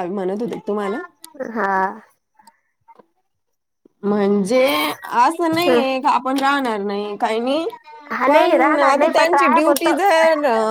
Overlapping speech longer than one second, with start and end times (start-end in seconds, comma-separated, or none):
8.3-9.9